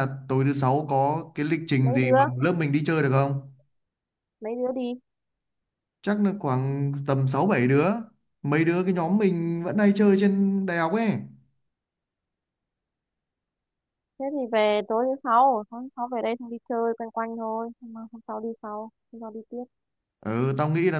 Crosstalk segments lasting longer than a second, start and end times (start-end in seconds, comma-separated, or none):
none